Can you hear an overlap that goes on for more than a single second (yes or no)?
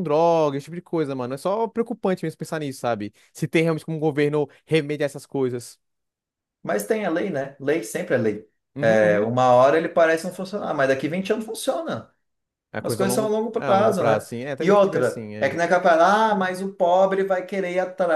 yes